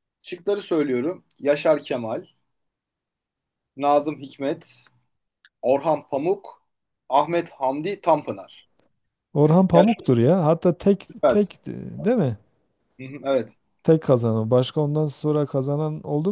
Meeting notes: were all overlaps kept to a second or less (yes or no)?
yes